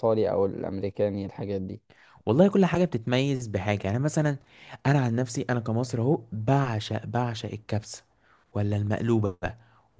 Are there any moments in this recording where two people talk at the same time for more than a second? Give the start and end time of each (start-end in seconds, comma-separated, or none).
none